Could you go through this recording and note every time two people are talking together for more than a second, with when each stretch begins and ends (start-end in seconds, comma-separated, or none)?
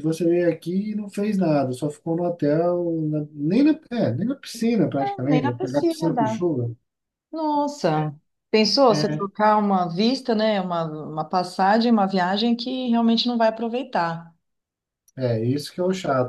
5.0-6.4